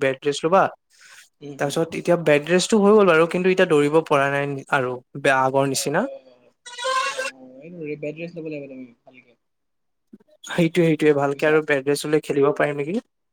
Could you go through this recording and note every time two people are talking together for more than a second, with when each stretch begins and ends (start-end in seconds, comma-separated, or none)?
none